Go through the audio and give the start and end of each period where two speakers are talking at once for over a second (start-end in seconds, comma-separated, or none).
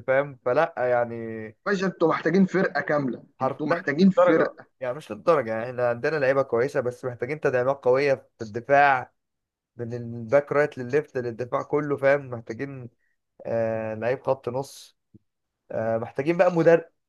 3.4-4.7